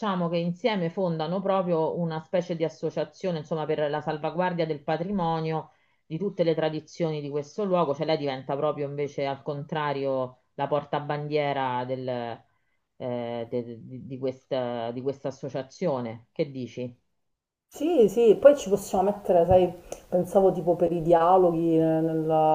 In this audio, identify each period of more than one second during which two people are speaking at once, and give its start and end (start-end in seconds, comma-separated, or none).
none